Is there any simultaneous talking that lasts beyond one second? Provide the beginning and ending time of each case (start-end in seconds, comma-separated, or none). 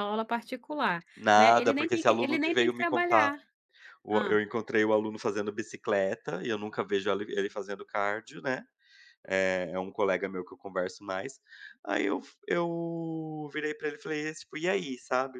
1.2-3.3